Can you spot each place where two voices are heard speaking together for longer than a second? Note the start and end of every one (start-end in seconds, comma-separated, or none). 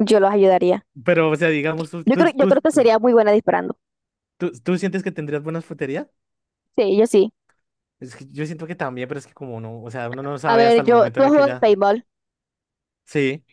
10.4-11.7